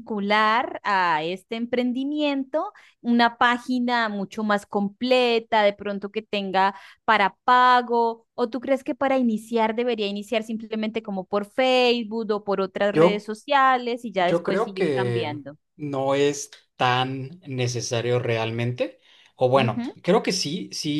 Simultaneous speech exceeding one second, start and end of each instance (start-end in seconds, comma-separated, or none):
14.2-15.6